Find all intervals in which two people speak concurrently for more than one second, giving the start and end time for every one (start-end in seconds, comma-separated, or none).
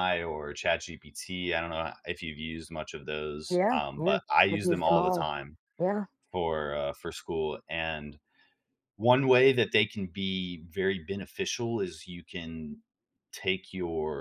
3.5-5.3